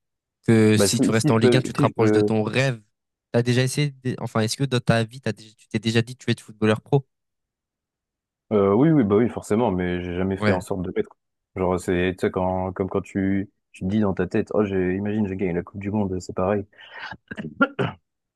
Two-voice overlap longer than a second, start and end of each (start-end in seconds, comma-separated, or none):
0.8-2.3